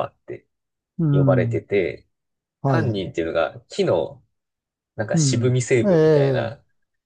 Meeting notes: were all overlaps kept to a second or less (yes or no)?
no